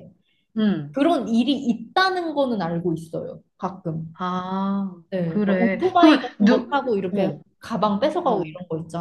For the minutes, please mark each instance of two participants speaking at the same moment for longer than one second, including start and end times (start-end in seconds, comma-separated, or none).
5.1-7.4